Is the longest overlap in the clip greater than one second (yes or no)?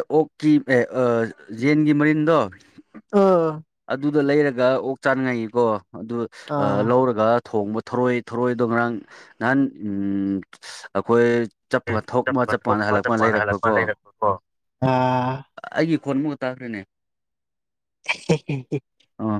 yes